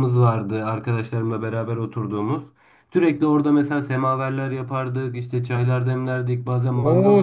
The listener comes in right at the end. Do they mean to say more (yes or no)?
yes